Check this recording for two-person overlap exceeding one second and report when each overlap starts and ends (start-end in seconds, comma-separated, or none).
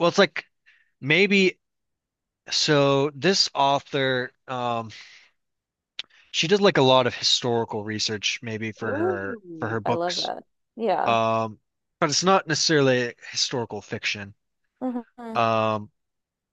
8.8-10.3